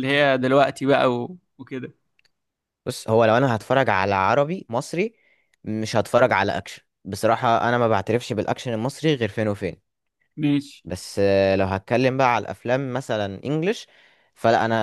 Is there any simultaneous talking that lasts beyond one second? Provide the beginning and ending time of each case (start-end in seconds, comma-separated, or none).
none